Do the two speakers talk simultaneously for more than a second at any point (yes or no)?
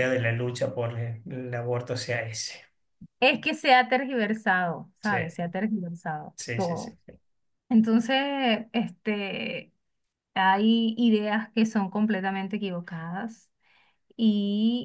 no